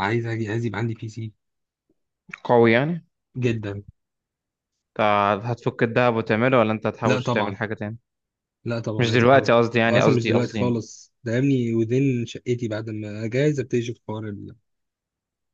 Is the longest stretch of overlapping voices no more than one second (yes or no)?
no